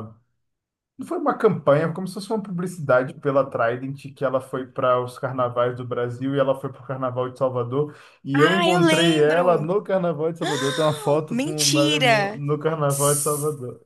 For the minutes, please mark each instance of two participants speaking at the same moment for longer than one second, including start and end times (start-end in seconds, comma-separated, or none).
8.3-9.7, 10.4-12.4